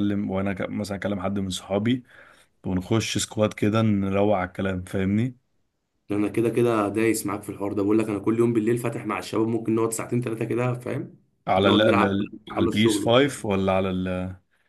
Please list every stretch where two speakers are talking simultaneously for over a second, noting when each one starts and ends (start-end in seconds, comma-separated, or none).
11.6-13.4